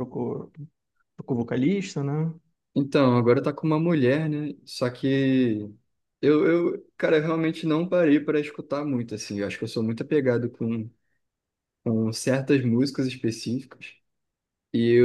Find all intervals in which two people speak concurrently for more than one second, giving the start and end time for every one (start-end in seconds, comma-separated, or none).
none